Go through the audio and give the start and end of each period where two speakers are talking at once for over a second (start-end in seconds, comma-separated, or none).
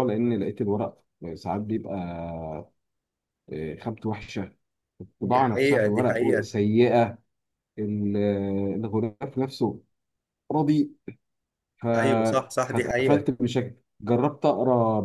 5.2-6.5